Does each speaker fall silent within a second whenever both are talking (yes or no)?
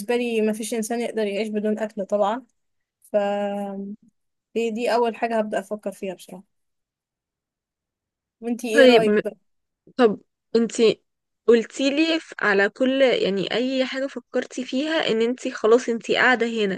yes